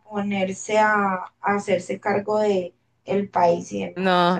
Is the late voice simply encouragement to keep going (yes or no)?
no